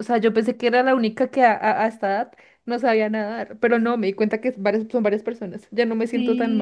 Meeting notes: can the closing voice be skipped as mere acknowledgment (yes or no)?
no